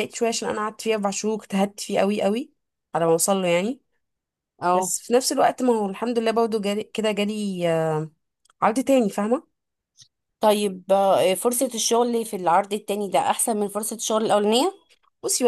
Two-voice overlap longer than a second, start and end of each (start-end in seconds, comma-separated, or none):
none